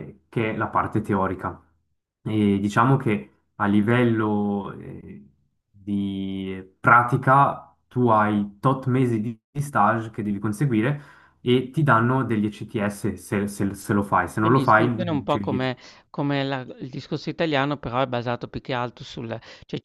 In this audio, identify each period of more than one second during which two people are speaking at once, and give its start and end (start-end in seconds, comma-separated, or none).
14.4-15.7